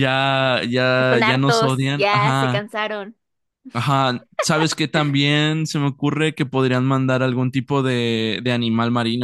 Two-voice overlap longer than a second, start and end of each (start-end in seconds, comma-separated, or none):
1.0-2.6